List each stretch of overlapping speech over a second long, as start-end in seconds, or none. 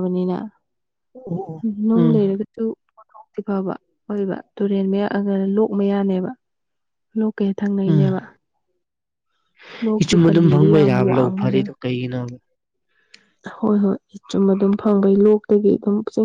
10.0-11.7